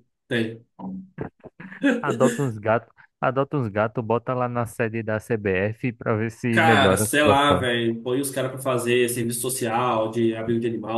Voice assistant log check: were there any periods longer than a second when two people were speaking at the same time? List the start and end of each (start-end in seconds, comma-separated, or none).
6.5-7.7